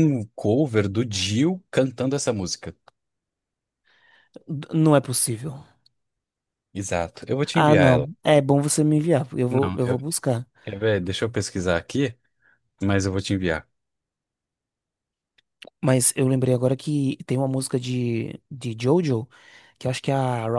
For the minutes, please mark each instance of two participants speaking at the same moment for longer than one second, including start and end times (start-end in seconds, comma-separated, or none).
none